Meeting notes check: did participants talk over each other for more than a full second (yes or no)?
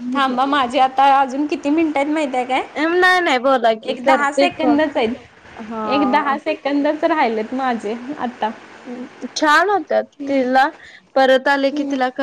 yes